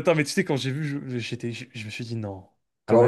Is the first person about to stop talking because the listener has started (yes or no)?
yes